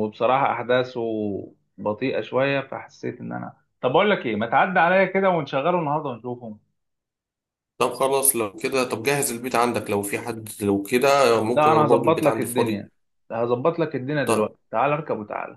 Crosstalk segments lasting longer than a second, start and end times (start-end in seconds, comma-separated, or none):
11.5-12.8